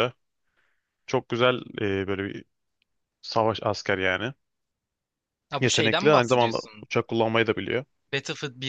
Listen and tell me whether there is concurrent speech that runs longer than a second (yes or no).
yes